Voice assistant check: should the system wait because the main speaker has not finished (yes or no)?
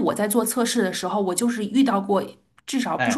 yes